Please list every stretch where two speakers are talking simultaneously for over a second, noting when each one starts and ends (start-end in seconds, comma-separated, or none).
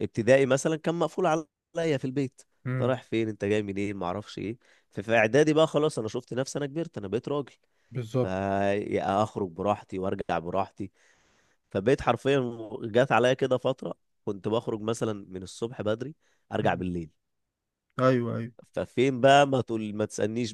none